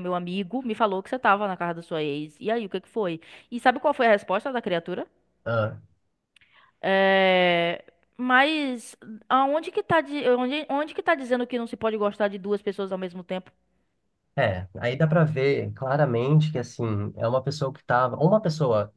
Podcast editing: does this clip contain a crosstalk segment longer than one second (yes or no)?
no